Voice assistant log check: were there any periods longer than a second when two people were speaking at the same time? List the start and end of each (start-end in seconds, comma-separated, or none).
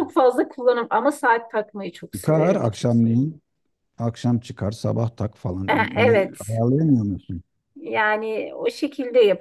none